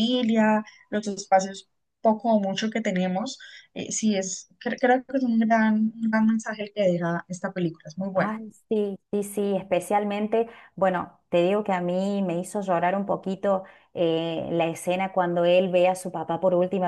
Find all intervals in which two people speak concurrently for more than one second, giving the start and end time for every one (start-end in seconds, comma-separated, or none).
none